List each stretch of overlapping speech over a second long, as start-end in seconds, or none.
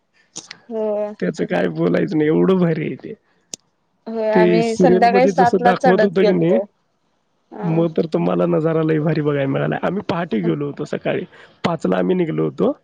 4.3-6.6